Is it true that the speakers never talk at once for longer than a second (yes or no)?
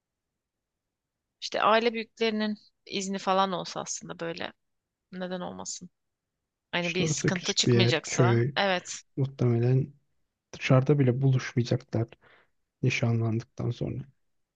no